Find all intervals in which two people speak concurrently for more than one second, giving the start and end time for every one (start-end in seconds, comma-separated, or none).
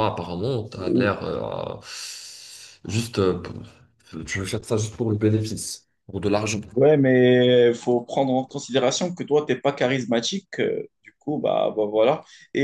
none